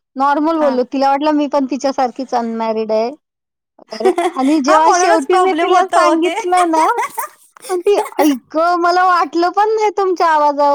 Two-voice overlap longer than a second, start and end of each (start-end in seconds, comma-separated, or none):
4.7-6.3